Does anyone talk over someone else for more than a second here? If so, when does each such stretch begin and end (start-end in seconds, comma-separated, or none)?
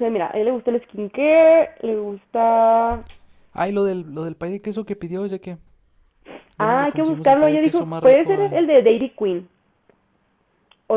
6.6-8.6